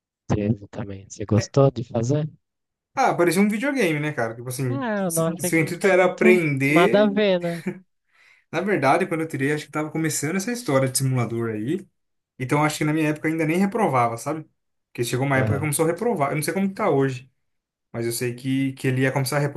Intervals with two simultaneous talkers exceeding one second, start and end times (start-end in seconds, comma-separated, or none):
4.7-7.1